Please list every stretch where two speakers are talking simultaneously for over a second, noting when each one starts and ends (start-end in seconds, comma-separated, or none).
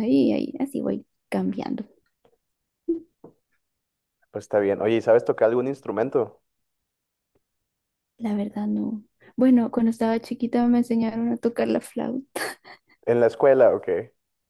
none